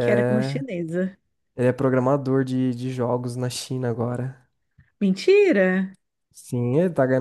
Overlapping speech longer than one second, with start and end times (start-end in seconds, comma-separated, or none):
none